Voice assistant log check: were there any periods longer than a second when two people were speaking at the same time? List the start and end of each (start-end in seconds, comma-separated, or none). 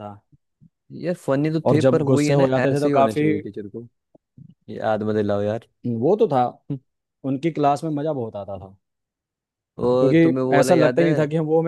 1.7-3.3, 9.9-11.1